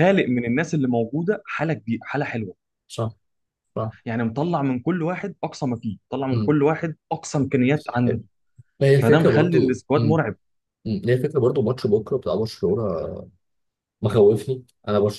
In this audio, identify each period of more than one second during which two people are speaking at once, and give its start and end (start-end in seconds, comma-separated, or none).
9.0-10.2